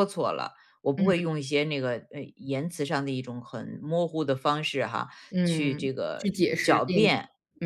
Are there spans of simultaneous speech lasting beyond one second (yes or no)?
yes